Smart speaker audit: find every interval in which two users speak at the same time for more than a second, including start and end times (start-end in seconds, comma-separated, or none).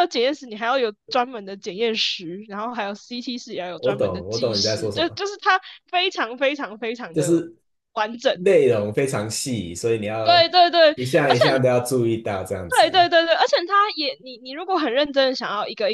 3.7-5.2